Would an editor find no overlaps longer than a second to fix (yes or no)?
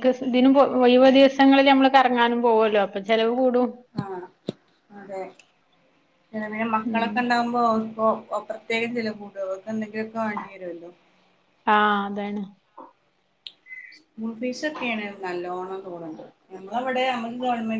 yes